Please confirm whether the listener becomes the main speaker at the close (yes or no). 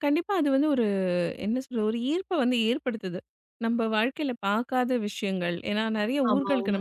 no